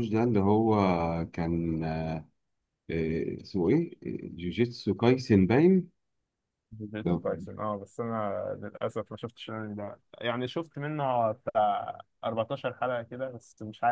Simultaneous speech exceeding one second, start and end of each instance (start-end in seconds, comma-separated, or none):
none